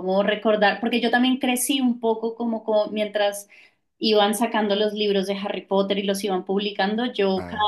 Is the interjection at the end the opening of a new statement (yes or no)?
no